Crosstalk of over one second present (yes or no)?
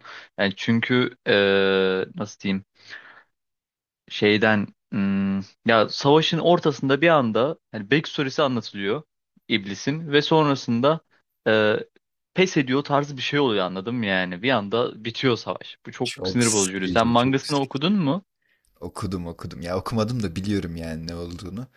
yes